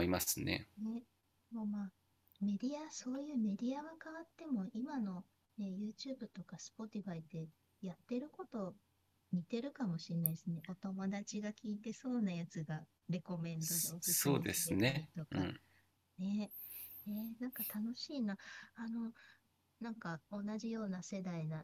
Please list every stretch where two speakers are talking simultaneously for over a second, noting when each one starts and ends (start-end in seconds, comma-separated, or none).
13.6-15.5